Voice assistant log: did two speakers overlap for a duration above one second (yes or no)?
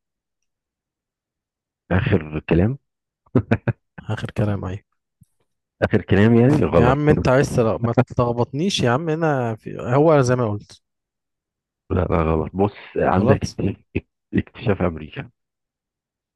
no